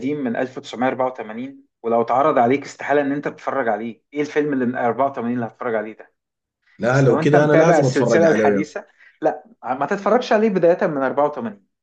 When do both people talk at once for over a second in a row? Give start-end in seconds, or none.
6.9-8.7